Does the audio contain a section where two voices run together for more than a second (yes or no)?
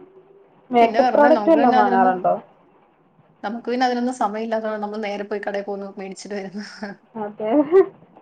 yes